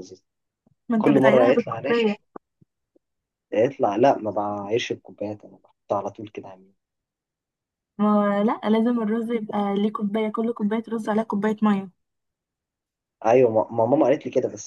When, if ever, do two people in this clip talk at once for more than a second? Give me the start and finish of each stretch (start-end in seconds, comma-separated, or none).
1.0-2.2